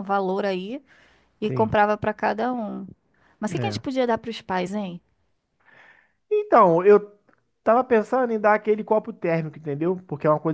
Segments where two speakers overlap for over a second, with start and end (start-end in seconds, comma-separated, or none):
none